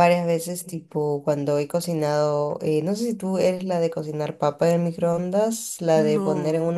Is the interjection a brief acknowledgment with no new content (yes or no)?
yes